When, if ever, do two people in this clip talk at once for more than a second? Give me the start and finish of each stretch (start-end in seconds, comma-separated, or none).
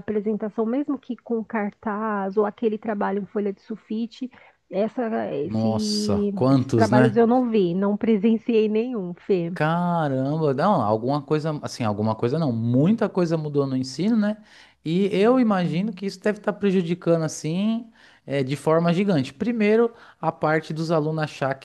5.4-7.2